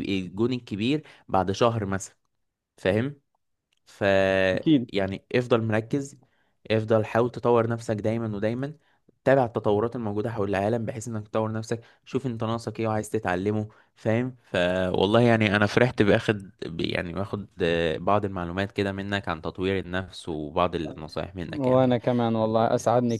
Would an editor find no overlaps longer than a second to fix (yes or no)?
yes